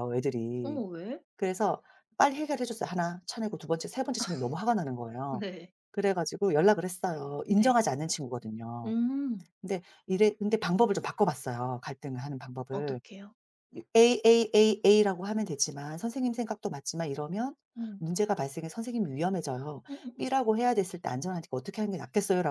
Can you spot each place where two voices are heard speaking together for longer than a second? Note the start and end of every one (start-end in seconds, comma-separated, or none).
none